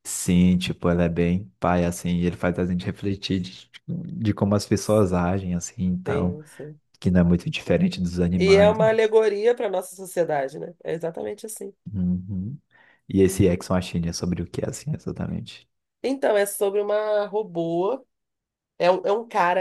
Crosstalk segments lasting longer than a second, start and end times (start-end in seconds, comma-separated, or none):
none